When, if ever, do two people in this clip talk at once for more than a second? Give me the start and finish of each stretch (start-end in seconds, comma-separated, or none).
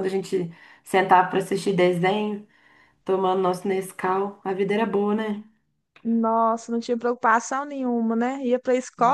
none